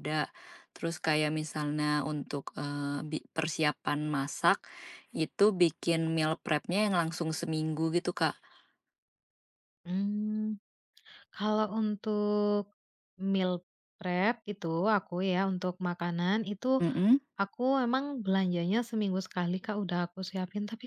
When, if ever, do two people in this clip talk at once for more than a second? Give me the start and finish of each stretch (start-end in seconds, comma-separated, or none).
none